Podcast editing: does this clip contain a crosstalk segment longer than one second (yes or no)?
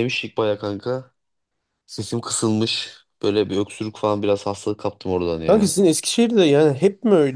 no